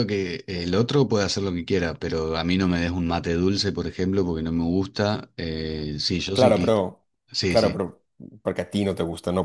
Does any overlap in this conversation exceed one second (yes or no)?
no